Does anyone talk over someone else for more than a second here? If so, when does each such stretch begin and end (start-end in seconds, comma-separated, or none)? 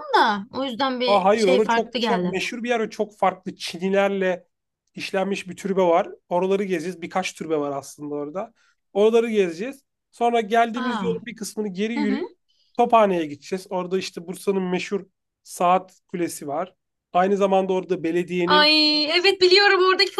1.1-2.4